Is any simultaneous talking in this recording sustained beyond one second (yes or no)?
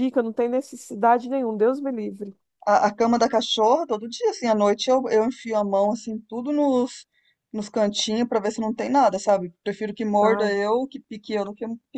no